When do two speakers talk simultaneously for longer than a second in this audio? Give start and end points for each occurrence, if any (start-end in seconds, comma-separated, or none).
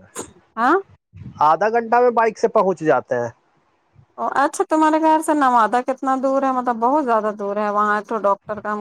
none